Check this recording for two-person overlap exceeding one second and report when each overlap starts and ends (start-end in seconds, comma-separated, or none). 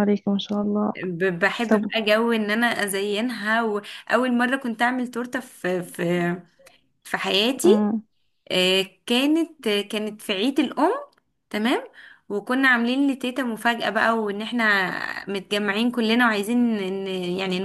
none